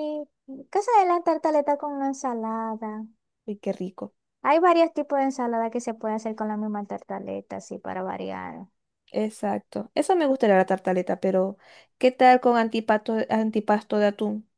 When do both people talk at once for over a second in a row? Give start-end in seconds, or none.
none